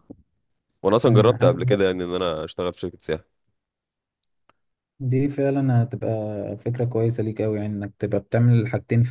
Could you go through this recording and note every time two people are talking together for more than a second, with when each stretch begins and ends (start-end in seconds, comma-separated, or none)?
none